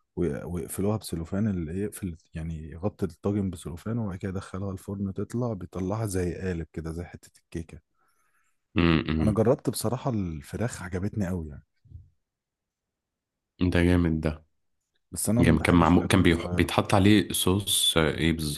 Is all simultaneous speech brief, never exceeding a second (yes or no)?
no